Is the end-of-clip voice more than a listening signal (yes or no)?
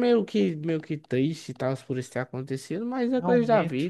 yes